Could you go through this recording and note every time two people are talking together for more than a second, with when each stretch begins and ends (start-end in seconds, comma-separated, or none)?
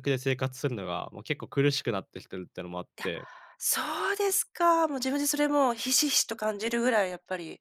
none